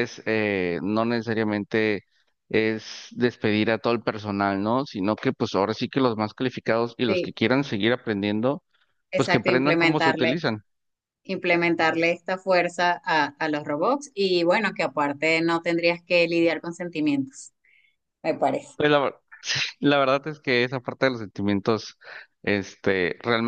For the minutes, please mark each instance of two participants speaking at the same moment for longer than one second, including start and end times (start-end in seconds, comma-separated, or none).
9.1-10.4